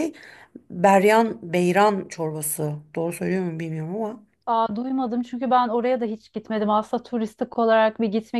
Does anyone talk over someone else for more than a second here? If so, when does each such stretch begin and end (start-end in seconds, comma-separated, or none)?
none